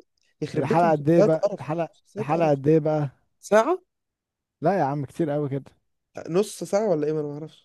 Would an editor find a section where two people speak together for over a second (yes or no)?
yes